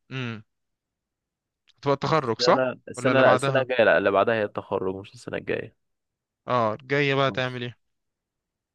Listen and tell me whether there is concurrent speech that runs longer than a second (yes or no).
yes